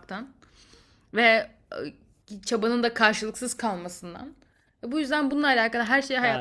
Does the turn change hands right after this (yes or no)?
yes